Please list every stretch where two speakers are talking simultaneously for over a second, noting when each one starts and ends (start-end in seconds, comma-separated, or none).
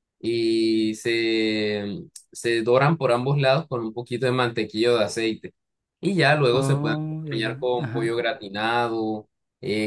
6.5-8.2